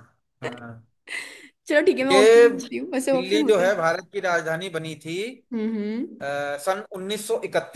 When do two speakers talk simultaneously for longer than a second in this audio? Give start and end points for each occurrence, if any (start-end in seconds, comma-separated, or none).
2.1-3.8